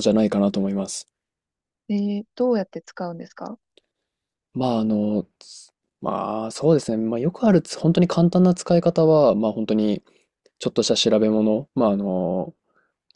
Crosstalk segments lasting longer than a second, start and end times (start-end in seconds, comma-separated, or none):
none